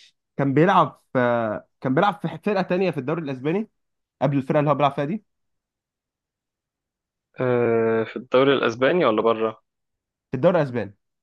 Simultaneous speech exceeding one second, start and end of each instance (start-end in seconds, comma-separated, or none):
none